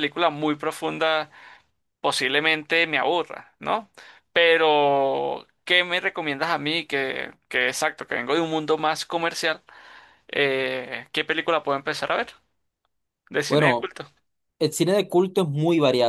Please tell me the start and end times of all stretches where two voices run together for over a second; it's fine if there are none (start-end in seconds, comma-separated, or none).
none